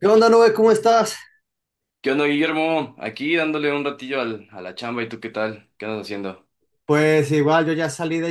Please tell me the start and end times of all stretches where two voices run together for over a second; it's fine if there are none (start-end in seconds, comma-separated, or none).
none